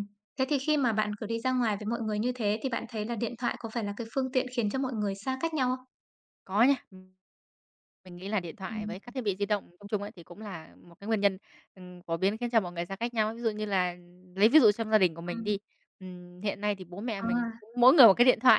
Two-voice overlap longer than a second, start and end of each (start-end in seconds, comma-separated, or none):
none